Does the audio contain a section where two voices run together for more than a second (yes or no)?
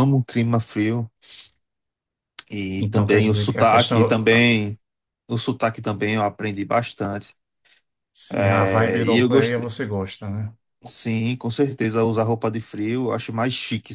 yes